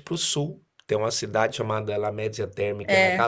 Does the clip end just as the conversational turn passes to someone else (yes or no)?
no